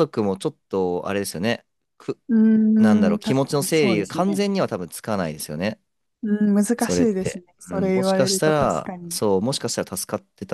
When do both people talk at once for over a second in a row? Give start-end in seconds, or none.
2.8-4.4, 6.8-9.2